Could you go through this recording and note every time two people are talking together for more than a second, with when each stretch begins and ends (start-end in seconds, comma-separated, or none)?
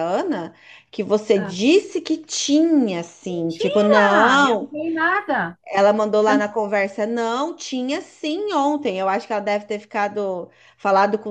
3.2-4.7